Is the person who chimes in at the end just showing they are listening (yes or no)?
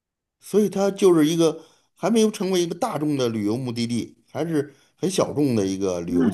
no